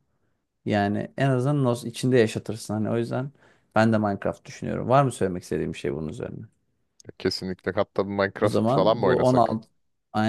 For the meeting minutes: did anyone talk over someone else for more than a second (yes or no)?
yes